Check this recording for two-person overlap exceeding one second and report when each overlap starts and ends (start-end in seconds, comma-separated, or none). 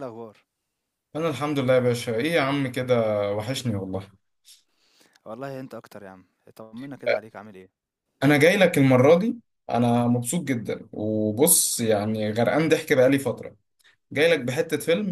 none